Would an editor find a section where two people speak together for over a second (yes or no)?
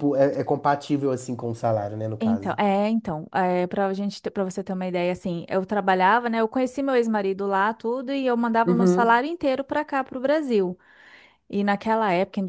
no